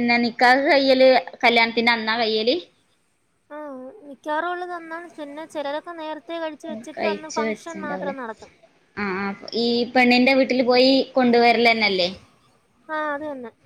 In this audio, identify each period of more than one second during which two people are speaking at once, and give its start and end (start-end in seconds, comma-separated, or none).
none